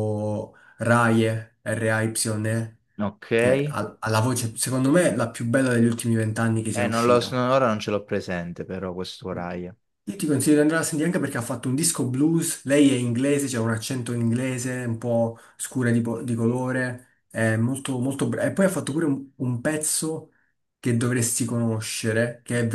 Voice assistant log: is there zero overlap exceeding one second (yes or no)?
yes